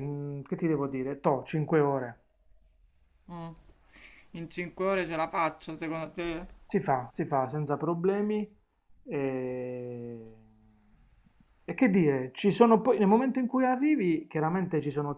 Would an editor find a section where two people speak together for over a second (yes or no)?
no